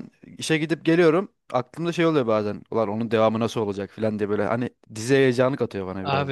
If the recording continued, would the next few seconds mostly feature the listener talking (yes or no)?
yes